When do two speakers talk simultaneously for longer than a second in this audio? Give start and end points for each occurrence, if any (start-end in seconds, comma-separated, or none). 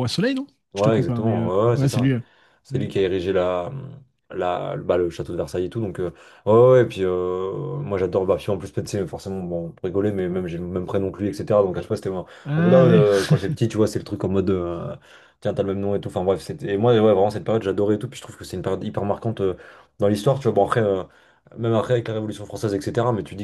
0.7-2.1